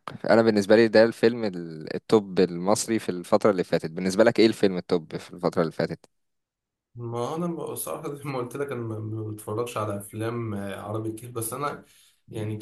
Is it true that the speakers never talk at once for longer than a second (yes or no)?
yes